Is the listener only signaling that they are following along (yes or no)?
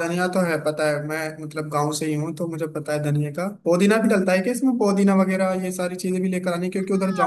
no